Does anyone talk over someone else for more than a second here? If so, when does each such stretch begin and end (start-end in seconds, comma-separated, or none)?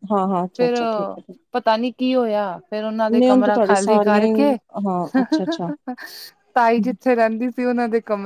3.2-4.5